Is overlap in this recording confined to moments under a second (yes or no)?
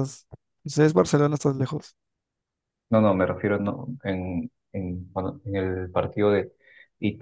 yes